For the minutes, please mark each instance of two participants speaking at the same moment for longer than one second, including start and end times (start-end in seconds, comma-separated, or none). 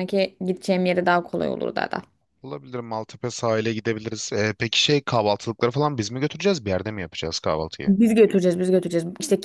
none